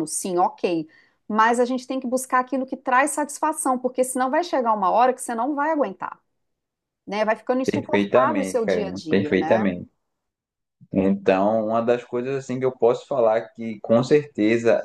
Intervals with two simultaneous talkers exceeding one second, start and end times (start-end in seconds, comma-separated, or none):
7.6-9.7